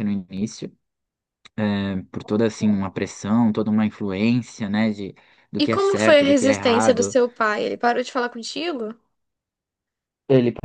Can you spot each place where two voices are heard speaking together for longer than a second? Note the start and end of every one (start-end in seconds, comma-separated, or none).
5.6-7.2